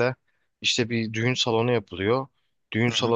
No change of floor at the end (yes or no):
yes